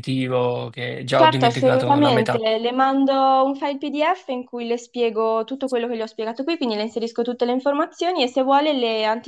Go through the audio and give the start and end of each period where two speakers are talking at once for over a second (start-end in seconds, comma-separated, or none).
1.1-2.4